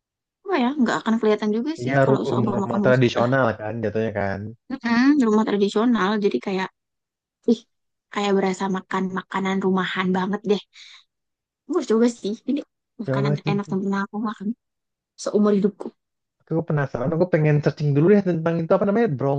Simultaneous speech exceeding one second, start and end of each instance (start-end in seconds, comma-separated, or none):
1.8-3.4